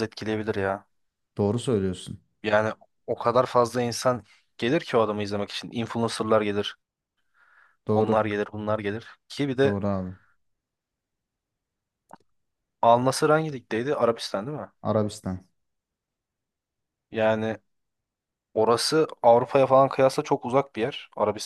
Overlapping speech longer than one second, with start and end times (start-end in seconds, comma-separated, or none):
none